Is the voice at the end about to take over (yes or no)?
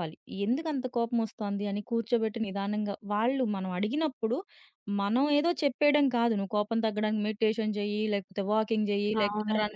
no